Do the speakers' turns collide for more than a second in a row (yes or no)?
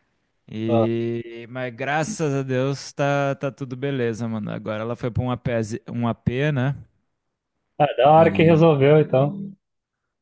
no